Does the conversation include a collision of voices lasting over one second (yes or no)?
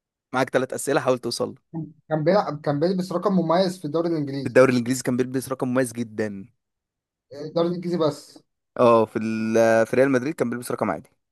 no